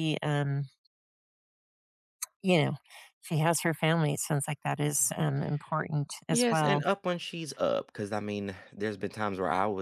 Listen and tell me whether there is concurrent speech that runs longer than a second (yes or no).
no